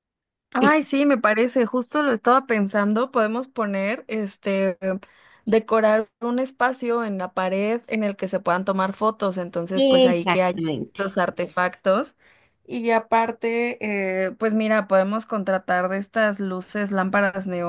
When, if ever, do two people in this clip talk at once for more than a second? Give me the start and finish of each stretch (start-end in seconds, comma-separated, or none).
9.8-11.2